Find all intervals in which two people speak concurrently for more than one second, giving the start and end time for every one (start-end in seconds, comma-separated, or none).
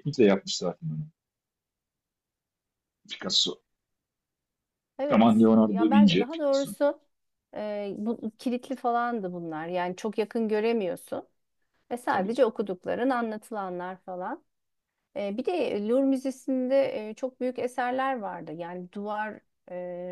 5.1-6.7